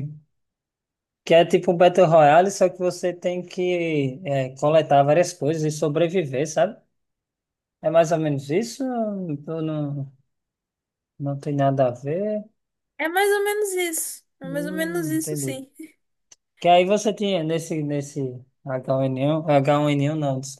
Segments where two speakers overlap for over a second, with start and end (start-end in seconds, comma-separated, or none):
14.4-15.6